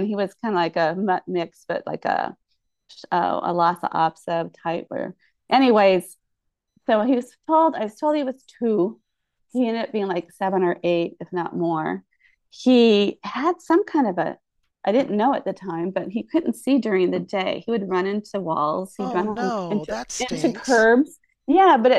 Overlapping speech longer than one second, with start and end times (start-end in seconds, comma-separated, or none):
19.0-20.9